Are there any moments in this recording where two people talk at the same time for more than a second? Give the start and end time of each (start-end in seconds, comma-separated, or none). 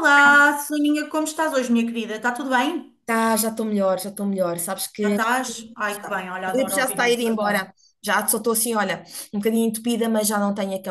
5.9-7.6